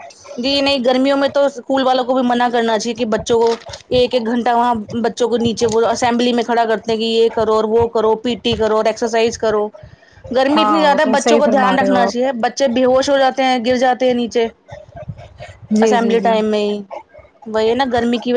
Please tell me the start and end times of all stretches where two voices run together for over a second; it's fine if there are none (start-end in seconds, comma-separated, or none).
10.6-12.3